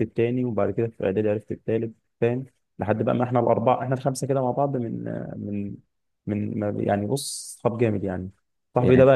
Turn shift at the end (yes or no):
no